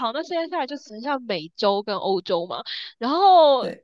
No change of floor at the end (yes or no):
yes